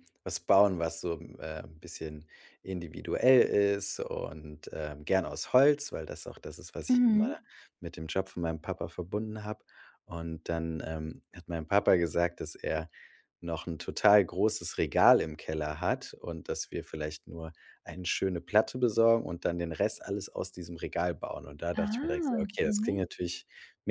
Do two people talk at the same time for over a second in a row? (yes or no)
yes